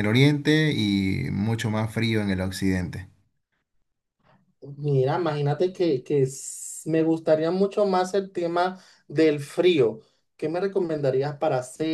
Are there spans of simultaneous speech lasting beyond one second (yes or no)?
no